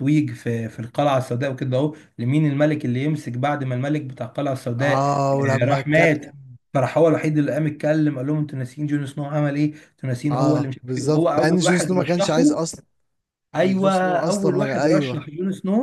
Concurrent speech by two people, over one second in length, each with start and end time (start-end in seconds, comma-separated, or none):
4.8-6.3, 10.3-12.6, 13.6-15.3